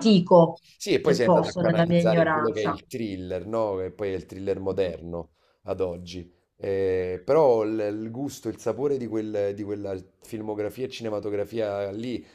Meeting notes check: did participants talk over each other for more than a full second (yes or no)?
yes